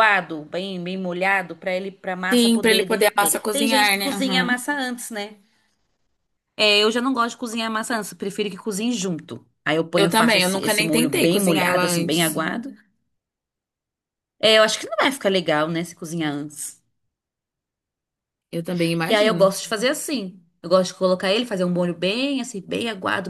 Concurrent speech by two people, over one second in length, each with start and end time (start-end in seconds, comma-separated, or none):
2.3-4.6, 10.0-12.4